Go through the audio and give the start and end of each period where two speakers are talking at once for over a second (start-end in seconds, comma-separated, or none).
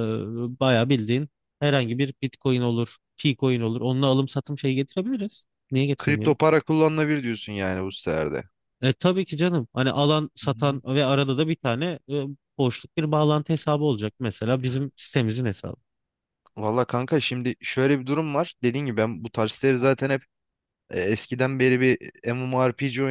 none